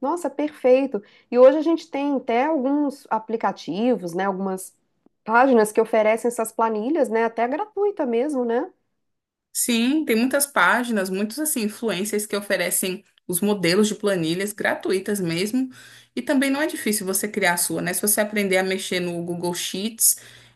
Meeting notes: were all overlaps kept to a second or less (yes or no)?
yes